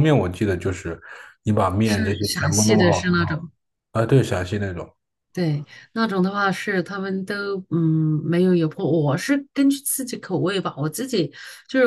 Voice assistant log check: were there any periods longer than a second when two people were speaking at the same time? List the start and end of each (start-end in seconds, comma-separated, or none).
1.8-3.1